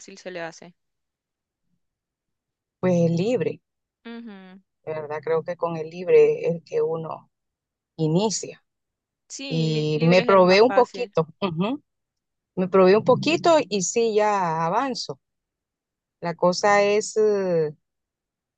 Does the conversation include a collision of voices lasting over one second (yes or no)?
yes